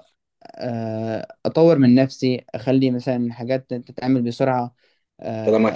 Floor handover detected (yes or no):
no